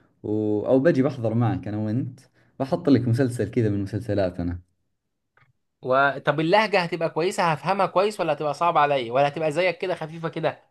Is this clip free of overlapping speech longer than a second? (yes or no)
yes